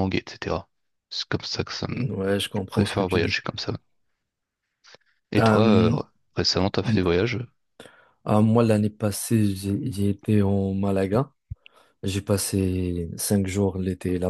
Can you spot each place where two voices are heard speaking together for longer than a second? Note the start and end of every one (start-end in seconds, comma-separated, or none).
1.9-3.4